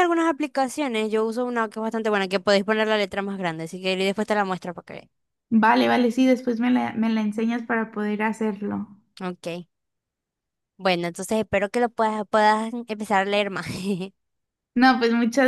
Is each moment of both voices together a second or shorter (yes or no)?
yes